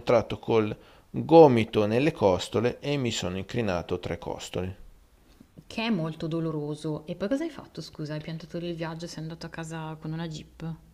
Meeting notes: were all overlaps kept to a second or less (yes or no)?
yes